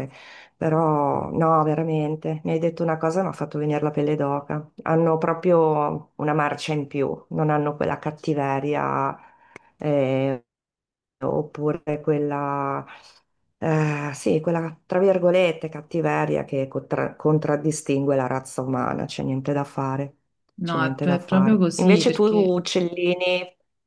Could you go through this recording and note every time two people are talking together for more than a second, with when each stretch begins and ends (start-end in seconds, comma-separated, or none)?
20.6-22.6